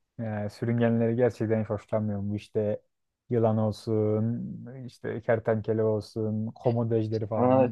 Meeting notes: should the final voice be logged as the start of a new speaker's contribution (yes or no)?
yes